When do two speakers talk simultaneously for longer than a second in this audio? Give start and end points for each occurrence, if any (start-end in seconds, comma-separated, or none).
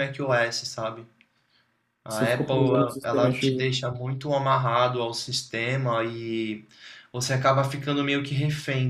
2.1-3.7